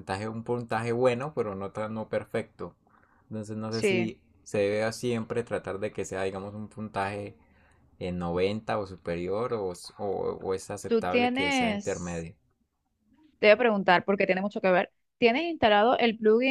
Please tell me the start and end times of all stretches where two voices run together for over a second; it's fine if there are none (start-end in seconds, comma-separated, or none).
10.9-12.2